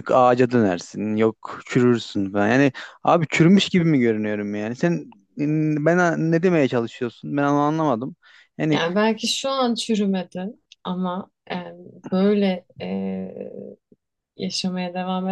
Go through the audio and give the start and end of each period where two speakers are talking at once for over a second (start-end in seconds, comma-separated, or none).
none